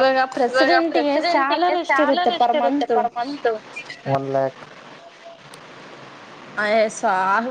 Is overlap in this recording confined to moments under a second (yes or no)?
no